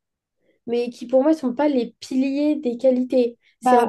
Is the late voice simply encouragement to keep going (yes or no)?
yes